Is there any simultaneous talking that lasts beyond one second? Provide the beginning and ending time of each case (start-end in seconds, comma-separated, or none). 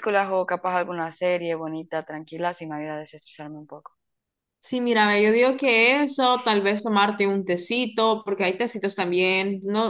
none